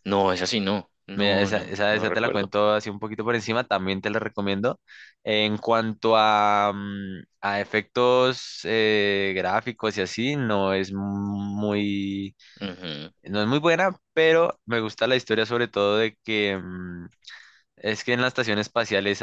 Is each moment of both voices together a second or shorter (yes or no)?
no